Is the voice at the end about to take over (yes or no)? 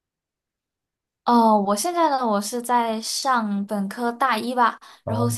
no